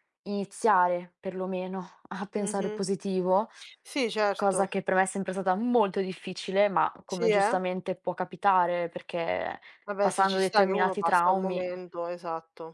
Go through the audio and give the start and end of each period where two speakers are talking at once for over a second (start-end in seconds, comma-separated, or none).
10.0-11.7